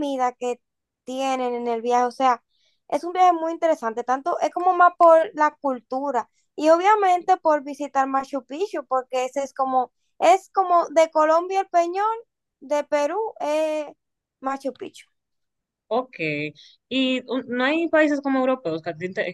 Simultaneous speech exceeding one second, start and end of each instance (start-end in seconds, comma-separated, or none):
none